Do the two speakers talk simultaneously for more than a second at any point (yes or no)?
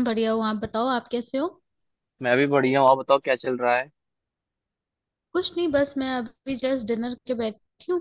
no